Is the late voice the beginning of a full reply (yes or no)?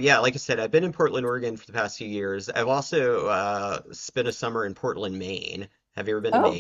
yes